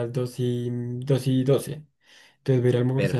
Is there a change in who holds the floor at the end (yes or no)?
no